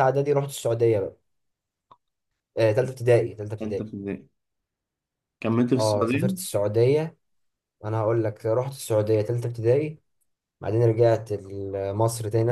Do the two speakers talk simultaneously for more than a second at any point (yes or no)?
no